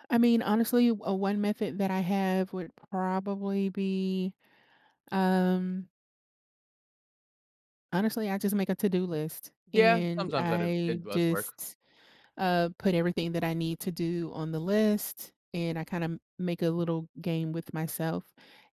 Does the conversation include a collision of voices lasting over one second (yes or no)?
yes